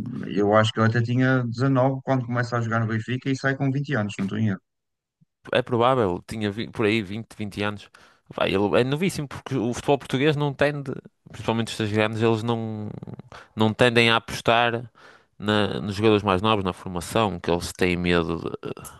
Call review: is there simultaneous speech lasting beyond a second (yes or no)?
no